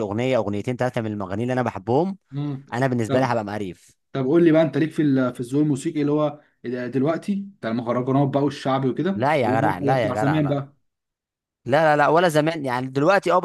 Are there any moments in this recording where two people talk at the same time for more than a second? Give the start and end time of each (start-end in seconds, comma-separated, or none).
9.2-10.6